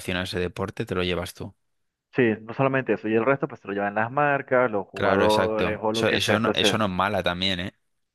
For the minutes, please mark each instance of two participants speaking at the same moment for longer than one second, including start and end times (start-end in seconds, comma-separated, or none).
4.9-6.8